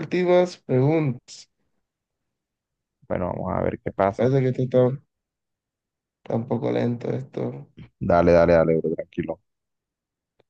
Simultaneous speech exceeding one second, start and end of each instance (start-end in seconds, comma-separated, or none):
none